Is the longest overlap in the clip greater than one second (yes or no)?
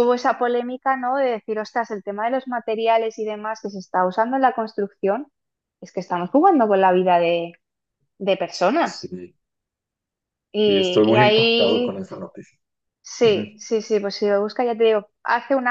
yes